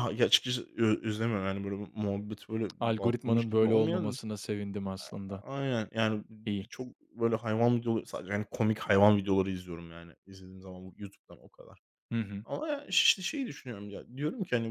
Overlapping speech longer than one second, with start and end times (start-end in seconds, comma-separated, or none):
2.8-4.2